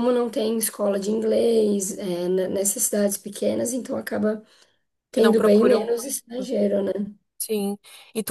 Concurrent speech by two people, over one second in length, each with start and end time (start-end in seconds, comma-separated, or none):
5.1-6.5